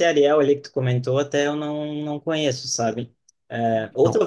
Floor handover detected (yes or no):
no